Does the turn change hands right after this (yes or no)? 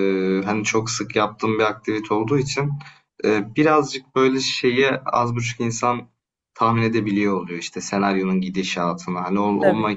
no